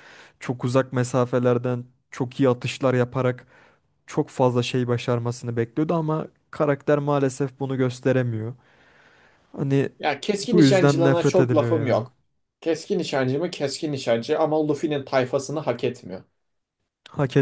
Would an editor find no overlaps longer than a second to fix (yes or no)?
no